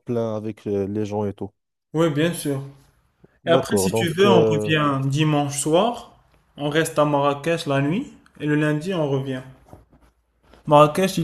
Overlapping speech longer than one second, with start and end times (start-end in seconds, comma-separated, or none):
3.5-4.7